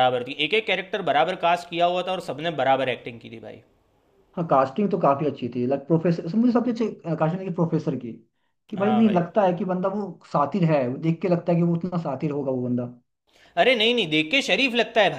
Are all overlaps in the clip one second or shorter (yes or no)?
yes